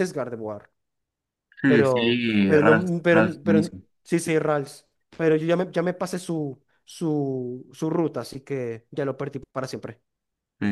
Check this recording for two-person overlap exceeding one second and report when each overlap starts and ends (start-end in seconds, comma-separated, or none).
1.6-3.8